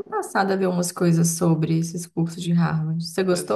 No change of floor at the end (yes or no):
no